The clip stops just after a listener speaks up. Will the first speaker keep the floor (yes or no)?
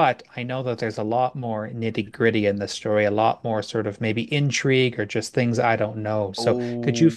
no